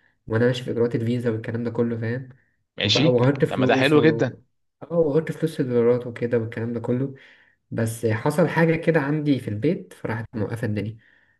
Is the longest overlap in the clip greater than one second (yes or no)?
yes